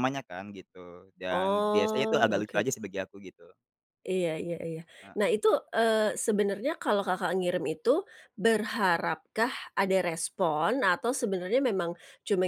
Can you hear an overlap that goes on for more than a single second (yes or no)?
yes